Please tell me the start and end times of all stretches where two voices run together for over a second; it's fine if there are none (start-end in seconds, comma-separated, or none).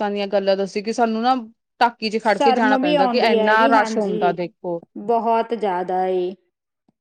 2.3-4.3